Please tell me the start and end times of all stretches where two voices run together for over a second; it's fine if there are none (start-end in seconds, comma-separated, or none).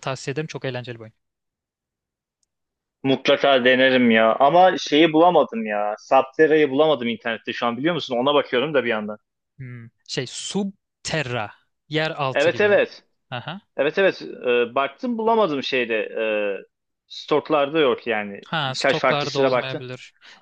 18.5-19.8